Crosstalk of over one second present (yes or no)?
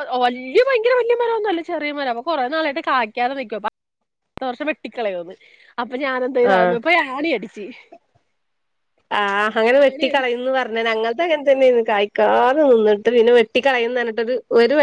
no